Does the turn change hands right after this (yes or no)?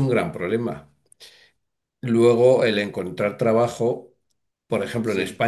no